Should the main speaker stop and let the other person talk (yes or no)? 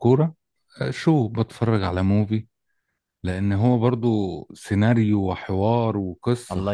yes